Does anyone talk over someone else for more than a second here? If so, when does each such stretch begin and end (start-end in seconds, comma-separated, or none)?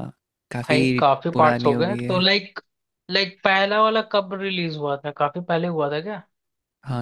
0.7-2.2